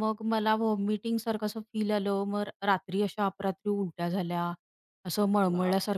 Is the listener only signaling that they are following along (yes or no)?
yes